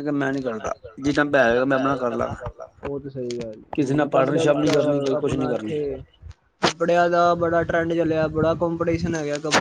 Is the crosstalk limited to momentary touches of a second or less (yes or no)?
no